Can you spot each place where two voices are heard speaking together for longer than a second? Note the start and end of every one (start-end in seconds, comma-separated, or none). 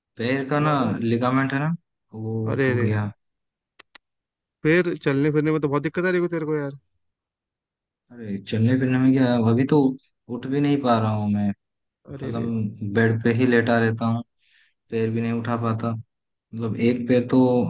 none